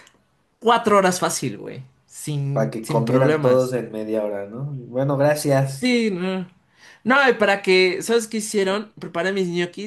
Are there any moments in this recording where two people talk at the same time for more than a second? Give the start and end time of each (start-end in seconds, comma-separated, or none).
2.5-3.7